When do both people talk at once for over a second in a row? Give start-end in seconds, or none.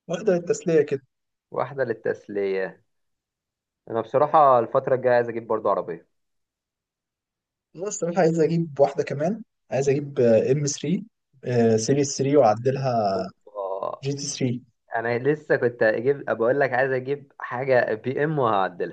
none